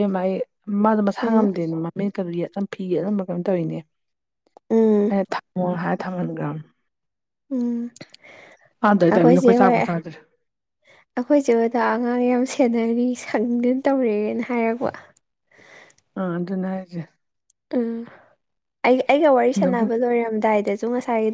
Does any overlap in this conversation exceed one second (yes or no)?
no